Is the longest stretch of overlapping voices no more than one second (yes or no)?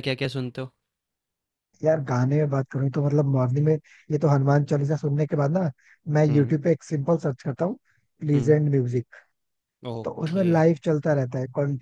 yes